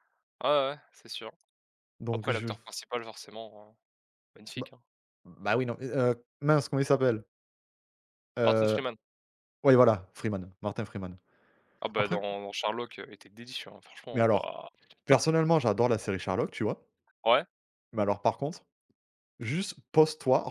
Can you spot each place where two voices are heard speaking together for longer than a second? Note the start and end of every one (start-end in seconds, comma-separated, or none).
none